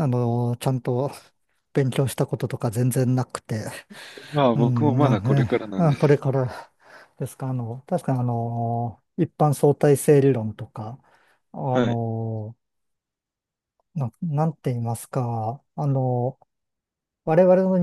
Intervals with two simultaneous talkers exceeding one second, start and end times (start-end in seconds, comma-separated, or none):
4.5-6.2